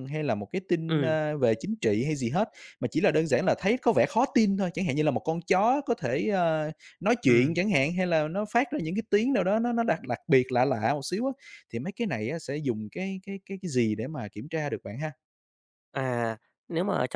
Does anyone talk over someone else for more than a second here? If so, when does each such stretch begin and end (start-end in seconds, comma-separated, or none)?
none